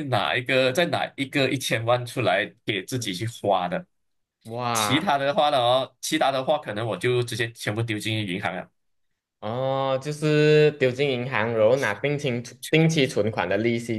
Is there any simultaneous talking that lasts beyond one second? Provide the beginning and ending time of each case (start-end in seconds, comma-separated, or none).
none